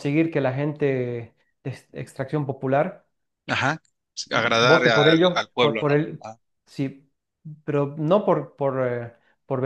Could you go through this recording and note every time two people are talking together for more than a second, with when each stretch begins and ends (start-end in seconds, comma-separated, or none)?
4.3-6.2